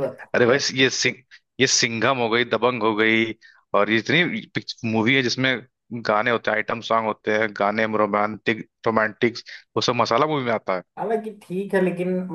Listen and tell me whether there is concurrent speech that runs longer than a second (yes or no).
no